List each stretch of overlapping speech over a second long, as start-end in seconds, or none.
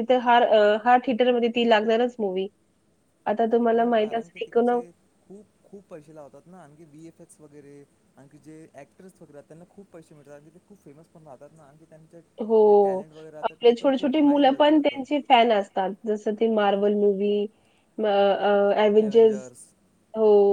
13.4-15.0